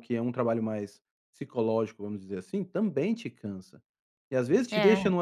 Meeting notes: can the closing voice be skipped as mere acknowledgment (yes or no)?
yes